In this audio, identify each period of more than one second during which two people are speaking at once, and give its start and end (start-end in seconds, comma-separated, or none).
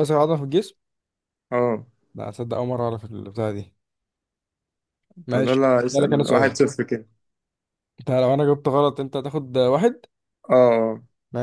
5.3-6.6